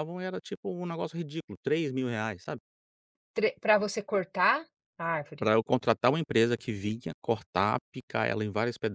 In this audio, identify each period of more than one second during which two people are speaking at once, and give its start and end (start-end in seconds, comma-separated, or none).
none